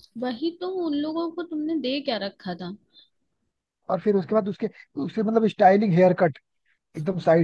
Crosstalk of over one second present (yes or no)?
no